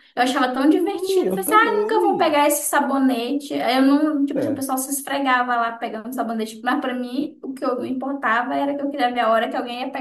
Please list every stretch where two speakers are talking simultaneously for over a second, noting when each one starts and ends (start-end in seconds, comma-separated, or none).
0.7-2.4